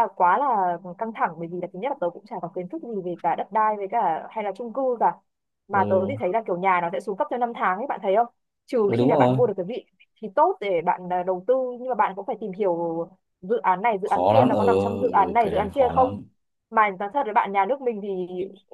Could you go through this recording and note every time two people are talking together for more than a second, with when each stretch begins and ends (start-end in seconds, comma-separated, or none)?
14.0-16.2